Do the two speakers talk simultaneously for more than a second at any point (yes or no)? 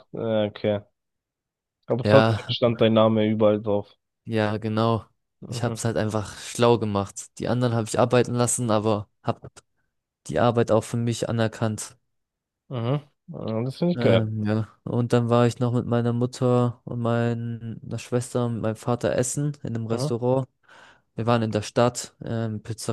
no